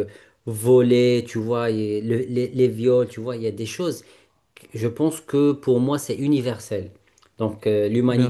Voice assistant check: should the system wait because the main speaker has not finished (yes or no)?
yes